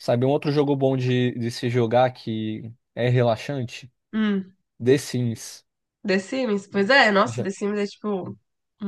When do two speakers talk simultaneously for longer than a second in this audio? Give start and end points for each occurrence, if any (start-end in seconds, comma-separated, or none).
none